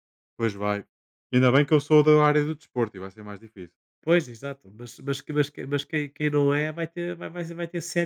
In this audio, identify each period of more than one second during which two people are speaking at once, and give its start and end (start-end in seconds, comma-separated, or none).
none